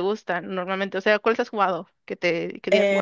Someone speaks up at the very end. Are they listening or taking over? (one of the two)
taking over